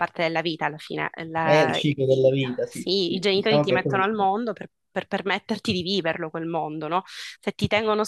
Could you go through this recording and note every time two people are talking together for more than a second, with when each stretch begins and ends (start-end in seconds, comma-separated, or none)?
1.4-4.3